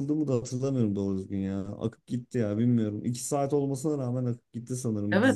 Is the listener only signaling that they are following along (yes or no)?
no